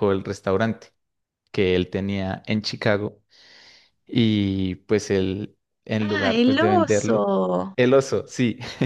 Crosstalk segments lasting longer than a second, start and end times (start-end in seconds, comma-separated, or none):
6.0-7.3